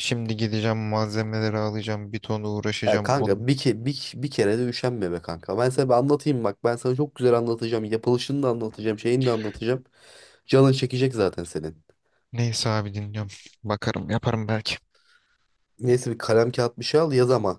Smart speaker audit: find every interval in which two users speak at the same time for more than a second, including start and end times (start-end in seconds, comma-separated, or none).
none